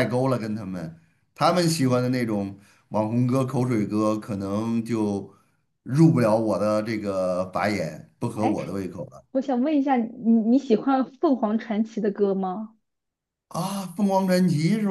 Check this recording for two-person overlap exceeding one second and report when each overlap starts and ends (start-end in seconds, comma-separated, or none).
none